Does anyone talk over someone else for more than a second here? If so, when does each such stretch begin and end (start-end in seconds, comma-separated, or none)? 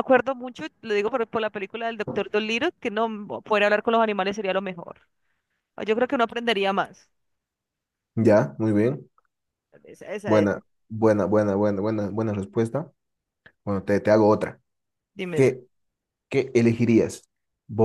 none